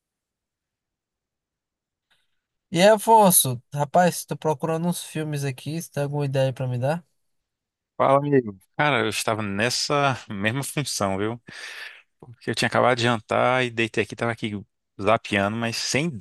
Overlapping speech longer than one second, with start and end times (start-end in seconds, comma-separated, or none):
none